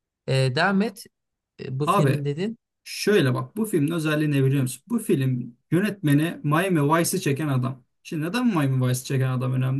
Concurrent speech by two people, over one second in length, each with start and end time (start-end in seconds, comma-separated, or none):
none